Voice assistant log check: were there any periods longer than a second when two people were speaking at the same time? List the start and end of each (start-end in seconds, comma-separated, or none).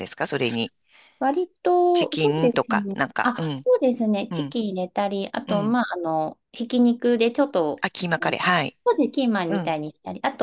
1.9-3.7